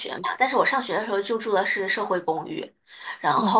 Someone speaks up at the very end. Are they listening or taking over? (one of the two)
listening